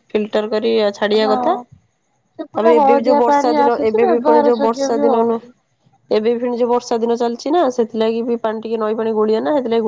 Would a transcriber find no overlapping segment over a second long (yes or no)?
no